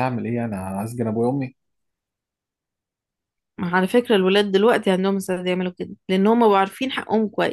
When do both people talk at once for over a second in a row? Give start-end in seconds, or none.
none